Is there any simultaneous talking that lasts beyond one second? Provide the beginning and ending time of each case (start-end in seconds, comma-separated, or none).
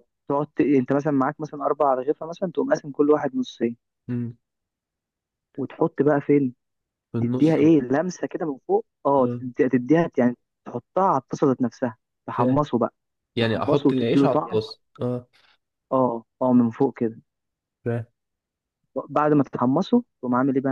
13.4-14.6